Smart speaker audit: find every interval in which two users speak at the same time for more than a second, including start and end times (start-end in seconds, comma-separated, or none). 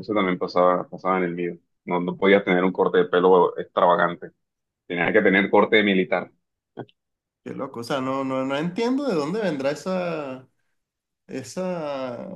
none